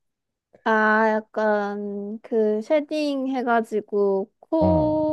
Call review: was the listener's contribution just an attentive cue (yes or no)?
yes